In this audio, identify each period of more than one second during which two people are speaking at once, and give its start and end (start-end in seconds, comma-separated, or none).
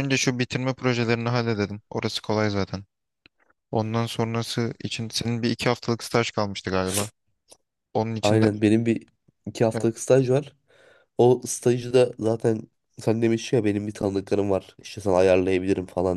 none